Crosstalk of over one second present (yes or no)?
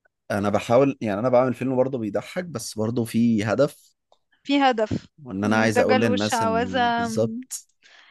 yes